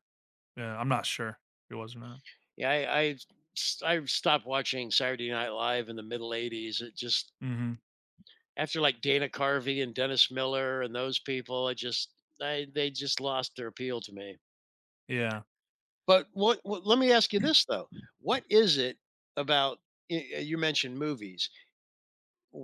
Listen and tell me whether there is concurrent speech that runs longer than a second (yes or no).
no